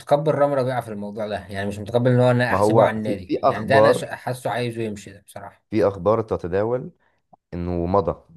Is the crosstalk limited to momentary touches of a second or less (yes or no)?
no